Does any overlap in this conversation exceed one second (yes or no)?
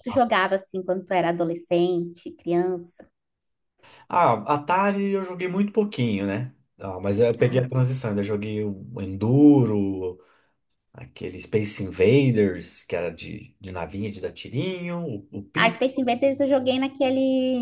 no